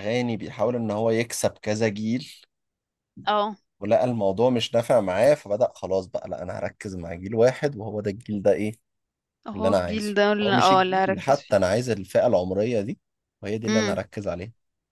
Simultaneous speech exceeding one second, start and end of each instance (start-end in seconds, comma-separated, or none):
9.5-11.5